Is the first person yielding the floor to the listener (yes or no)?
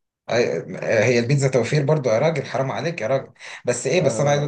no